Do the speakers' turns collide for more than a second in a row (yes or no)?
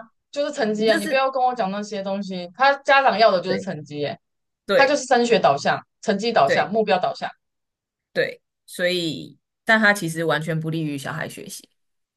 no